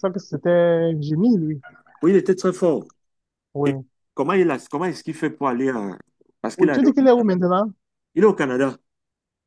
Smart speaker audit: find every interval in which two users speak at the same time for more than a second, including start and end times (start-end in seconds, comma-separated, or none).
none